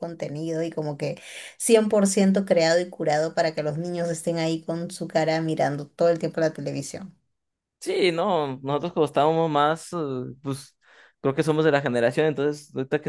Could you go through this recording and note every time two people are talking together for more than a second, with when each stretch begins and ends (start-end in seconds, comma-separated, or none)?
none